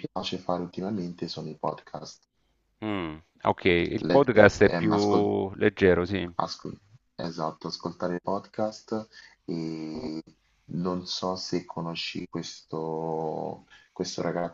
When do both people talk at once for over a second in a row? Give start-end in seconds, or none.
4.1-5.3